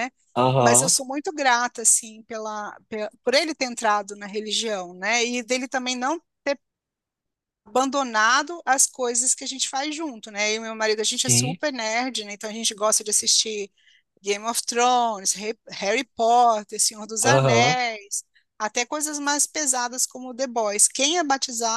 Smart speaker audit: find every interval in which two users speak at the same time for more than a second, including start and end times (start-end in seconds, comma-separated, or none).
none